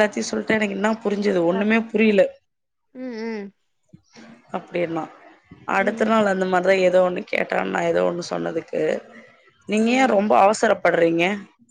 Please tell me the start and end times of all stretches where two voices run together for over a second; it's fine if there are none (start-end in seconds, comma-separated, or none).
none